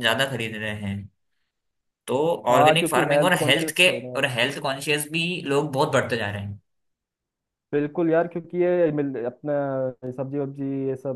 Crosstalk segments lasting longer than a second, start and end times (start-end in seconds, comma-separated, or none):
2.5-4.3